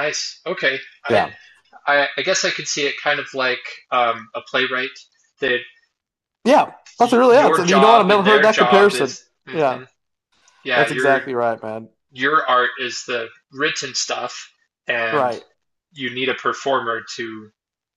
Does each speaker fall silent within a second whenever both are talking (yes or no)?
no